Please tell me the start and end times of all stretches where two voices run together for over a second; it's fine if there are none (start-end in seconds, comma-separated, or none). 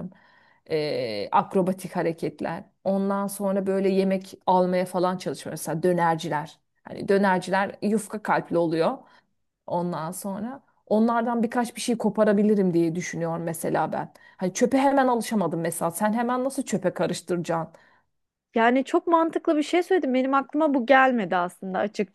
none